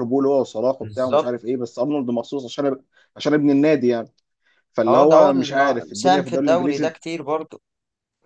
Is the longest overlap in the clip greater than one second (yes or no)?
yes